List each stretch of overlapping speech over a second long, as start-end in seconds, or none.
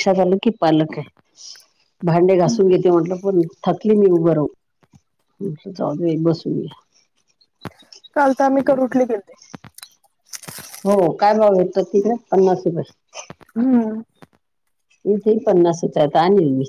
none